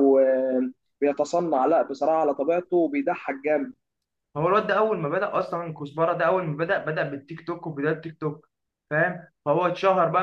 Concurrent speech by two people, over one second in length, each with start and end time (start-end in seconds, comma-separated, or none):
none